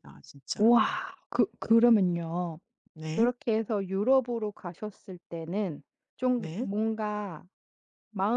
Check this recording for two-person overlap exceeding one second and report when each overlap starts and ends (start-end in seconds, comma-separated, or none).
none